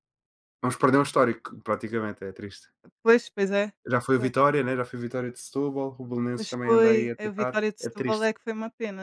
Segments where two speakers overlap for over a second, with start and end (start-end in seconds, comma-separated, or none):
6.3-8.3